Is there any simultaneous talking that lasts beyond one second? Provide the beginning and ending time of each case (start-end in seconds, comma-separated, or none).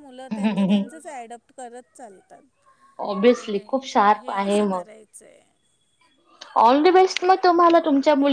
3.3-4.8